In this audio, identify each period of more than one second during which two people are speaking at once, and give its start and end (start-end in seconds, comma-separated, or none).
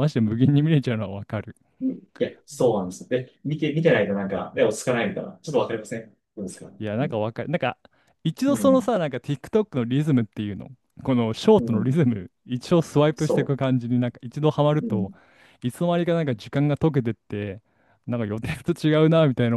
none